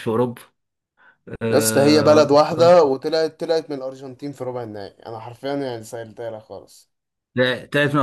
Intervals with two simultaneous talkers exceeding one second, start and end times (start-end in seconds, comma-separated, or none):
1.5-2.7